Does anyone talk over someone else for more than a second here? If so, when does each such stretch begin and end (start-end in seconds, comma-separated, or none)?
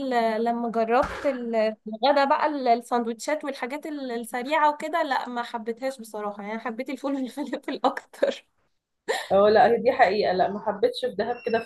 none